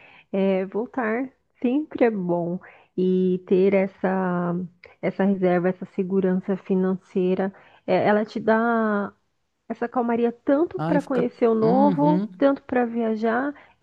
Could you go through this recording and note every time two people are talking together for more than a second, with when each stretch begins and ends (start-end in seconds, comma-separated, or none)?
10.8-12.3